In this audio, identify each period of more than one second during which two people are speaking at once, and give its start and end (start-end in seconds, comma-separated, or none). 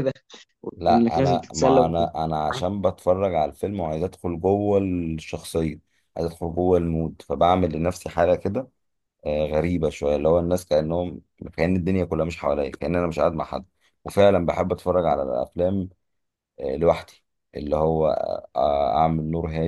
0.8-2.0